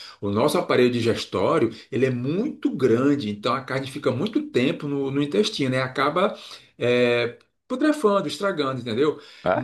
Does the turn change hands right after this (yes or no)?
no